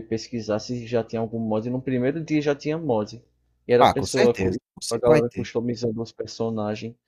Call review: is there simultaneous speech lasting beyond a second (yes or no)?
yes